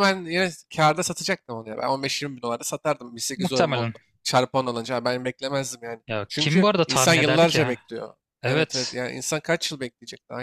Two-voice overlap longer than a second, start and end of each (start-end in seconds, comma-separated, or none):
6.1-7.8